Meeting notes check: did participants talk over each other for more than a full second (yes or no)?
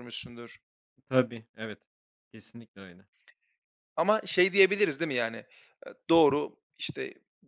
no